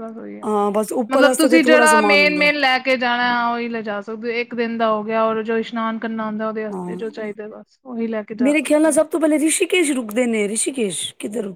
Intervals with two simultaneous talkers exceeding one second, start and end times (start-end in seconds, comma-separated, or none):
1.1-2.5